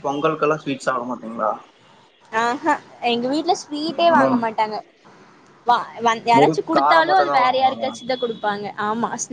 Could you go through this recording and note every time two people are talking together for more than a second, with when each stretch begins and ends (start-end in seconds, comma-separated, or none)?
6.4-7.8